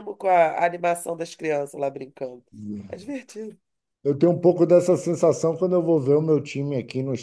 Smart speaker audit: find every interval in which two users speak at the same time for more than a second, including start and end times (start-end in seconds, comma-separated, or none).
none